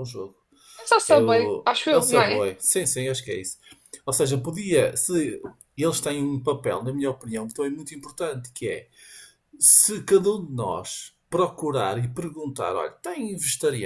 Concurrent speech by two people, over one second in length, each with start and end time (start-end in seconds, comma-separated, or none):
1.1-2.5